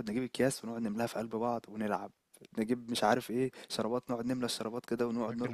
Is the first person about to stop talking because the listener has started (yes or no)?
yes